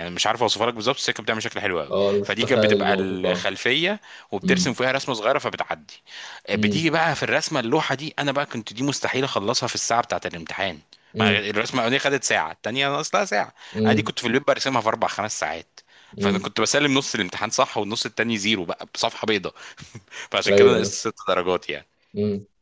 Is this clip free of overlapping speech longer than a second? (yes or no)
no